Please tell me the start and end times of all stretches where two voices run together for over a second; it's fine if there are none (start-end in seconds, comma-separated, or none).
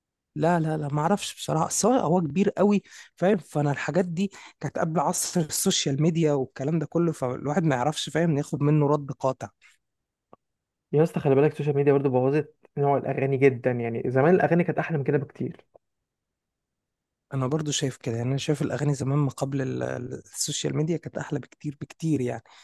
none